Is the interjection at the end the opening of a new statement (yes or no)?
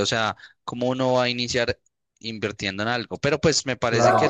no